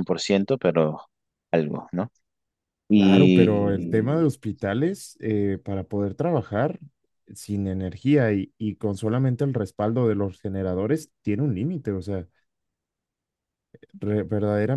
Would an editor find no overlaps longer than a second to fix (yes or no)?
no